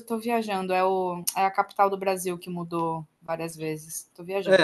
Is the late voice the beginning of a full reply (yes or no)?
yes